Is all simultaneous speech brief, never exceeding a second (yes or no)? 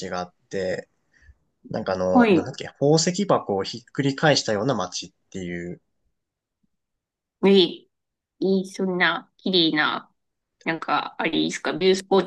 yes